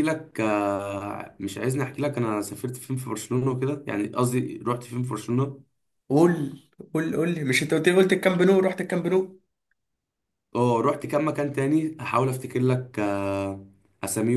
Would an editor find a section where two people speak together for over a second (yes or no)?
no